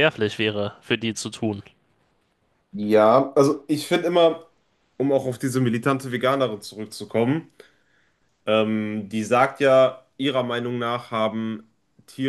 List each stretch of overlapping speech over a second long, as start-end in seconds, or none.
none